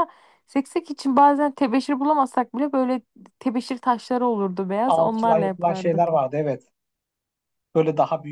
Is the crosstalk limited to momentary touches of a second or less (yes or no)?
no